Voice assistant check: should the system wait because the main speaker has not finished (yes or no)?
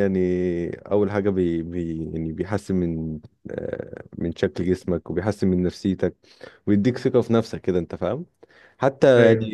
yes